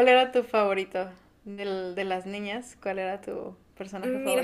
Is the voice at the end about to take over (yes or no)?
yes